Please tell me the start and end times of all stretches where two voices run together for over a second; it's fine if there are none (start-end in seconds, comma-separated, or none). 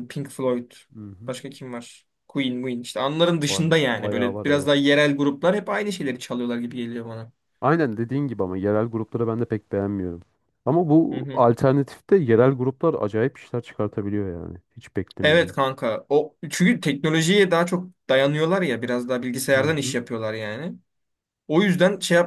3.4-4.7